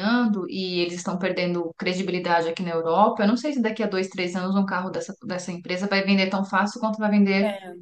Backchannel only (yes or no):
yes